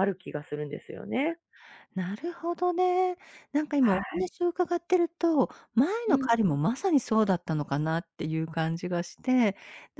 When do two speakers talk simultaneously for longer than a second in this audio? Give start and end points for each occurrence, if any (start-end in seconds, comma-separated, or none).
none